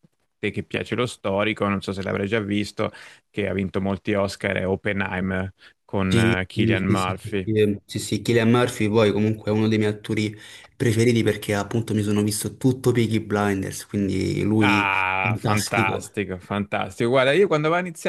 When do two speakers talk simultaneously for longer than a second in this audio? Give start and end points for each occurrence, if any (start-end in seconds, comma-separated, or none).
6.1-7.5, 14.6-16.1